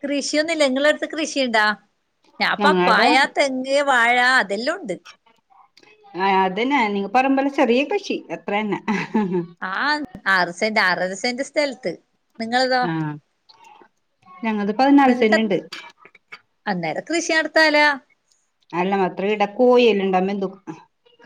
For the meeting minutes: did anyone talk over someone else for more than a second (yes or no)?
no